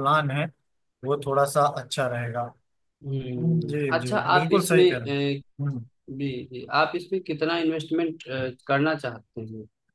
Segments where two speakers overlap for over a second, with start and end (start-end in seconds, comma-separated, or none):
3.4-5.2